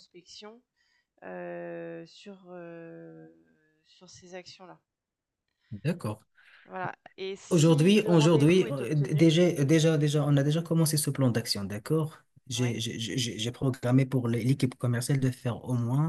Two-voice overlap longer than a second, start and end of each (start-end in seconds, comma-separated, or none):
7.5-9.3